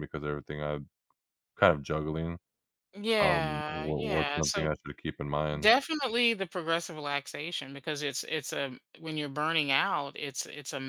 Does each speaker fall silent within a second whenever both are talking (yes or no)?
no